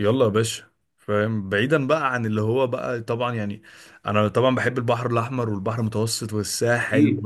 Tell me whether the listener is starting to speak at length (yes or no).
no